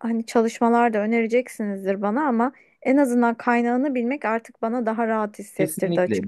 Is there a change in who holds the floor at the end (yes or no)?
yes